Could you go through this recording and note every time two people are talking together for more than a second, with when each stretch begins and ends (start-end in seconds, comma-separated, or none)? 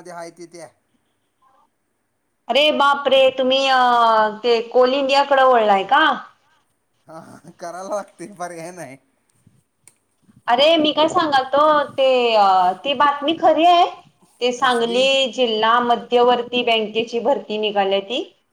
none